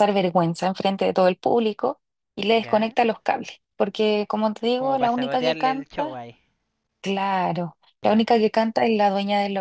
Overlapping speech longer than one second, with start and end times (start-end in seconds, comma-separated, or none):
4.8-6.2